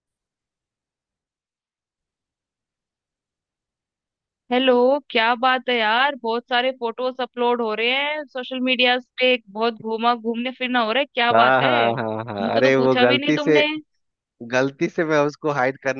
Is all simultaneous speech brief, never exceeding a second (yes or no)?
no